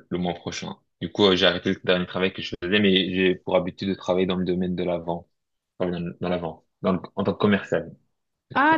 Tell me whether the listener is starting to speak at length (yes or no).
yes